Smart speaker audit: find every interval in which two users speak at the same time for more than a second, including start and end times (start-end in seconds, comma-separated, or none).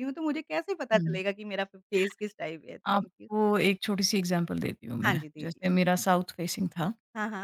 none